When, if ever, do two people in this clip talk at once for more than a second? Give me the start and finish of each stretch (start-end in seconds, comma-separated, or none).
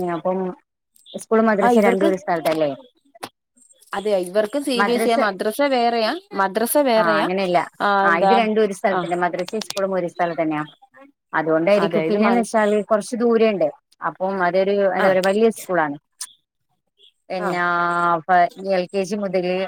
none